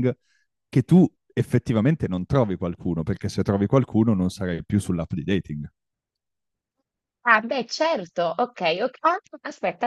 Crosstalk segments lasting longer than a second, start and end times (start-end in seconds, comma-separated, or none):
none